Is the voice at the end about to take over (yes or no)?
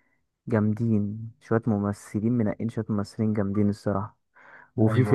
no